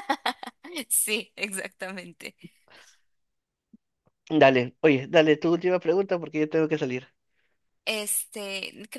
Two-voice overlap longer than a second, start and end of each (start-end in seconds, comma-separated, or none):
none